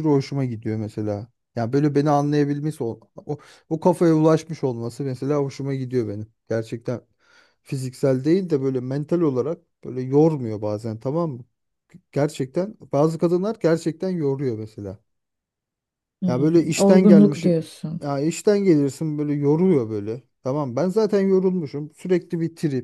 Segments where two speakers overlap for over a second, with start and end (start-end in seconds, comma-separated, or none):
16.3-17.6